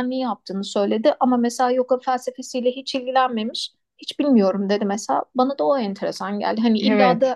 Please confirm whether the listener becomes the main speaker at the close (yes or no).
no